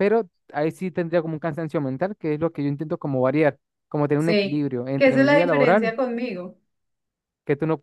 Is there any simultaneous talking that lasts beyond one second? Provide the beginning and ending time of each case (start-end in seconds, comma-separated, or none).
4.2-5.9